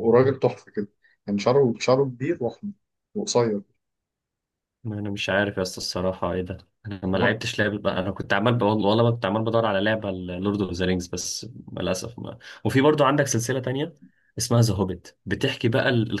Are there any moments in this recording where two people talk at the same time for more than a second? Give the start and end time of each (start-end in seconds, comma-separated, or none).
none